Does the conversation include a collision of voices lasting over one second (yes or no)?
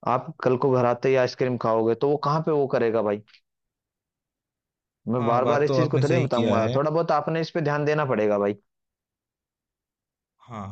yes